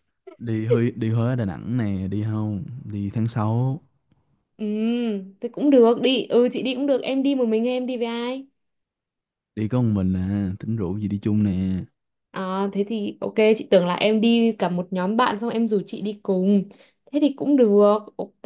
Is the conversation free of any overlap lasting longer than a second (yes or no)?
yes